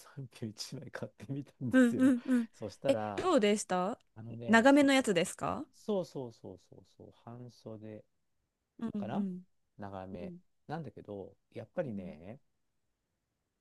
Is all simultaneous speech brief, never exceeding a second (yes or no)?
yes